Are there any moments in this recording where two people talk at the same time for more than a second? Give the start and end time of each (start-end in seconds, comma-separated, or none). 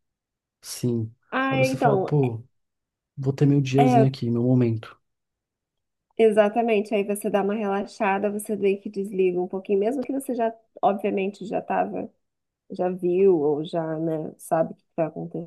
none